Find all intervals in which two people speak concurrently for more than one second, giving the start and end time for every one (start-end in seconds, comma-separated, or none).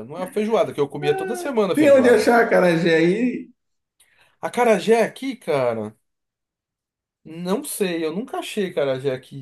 1.0-2.3